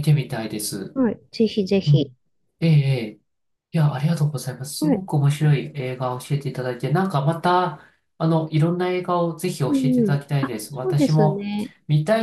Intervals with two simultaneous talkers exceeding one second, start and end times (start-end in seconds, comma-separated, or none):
9.7-11.5